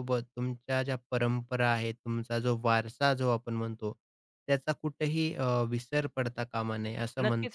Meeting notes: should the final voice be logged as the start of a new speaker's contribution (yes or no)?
yes